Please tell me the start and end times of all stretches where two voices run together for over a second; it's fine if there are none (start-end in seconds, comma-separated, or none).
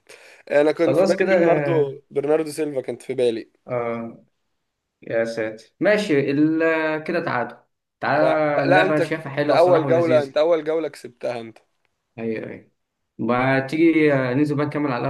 8.2-10.3